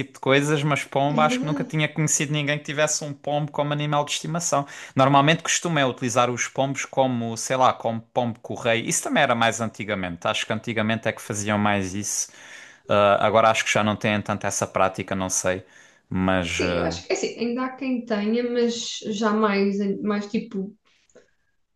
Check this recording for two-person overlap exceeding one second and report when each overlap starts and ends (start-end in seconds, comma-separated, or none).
none